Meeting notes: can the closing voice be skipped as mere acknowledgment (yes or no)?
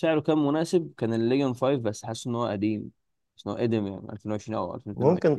no